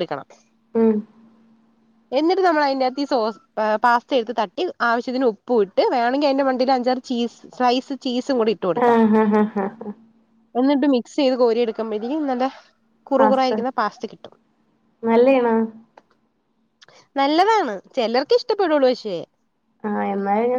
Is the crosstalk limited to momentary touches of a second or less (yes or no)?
yes